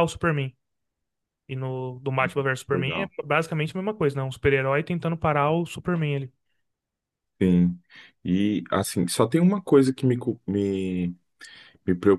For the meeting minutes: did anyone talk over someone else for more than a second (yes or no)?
no